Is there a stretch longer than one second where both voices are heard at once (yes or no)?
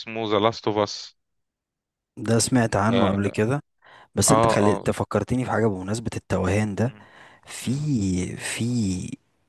no